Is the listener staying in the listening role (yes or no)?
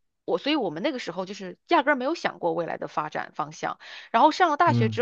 yes